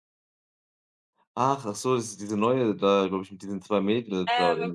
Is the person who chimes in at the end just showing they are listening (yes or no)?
no